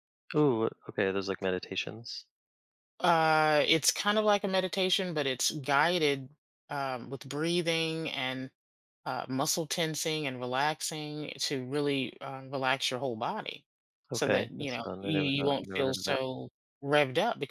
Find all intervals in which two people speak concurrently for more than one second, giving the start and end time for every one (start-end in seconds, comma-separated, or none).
14.1-16.2